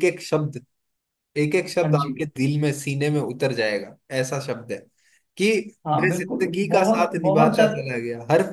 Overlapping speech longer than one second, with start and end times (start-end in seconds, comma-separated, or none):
6.0-8.0